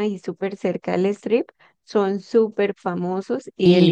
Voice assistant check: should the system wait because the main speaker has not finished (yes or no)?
no